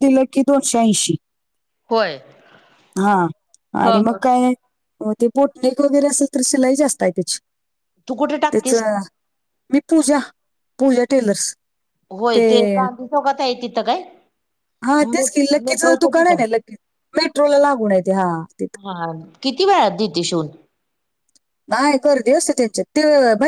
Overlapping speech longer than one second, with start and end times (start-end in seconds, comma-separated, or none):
15.1-16.4